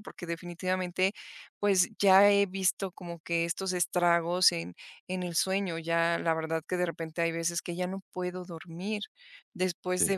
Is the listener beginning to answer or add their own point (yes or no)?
no